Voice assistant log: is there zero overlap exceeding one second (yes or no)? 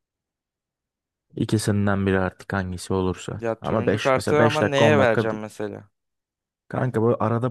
no